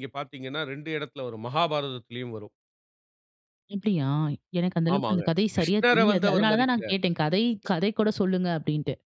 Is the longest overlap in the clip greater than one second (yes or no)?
yes